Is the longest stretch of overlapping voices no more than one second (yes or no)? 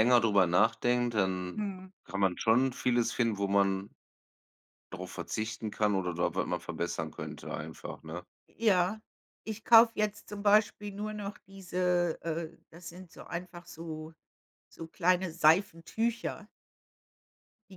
yes